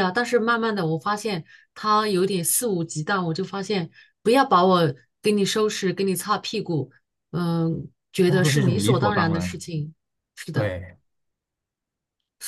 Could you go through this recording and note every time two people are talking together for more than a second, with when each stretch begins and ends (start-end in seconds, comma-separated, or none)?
8.2-9.6